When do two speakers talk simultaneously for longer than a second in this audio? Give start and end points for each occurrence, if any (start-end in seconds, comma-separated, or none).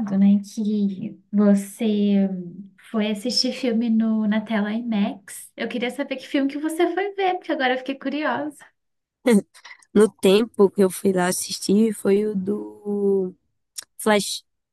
none